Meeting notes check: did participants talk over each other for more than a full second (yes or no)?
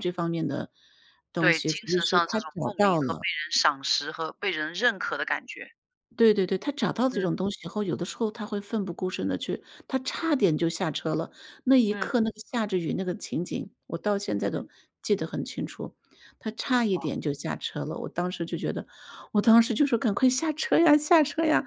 yes